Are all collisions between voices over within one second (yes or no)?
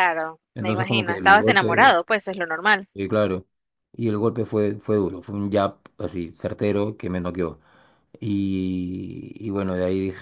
no